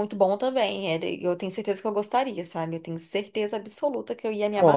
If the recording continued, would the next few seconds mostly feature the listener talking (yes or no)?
yes